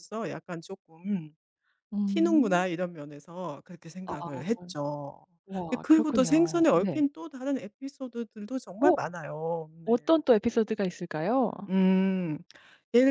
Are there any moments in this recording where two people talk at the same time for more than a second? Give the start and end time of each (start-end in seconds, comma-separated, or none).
5.7-7.0